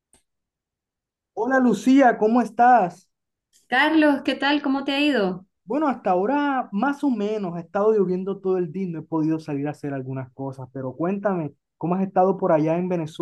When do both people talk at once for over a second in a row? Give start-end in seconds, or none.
none